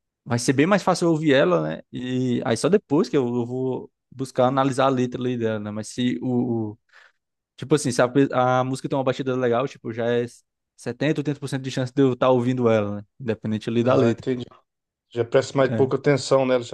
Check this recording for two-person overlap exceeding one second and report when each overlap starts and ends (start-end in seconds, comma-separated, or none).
none